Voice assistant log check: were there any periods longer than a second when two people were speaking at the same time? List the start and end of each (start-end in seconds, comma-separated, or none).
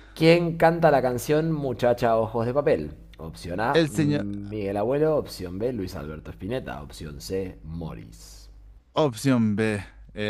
none